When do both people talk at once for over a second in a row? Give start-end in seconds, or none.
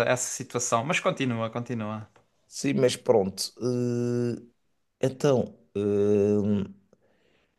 none